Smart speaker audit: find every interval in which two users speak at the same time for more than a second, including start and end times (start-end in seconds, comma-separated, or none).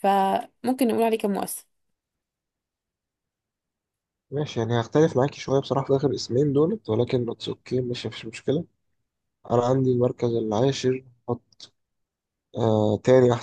none